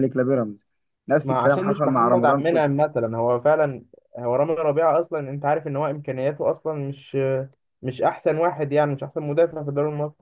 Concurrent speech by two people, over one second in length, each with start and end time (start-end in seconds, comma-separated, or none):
1.2-2.8